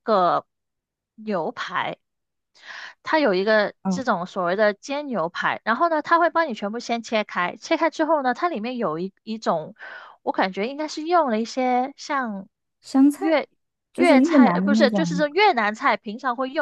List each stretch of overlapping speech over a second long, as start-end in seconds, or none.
13.9-15.2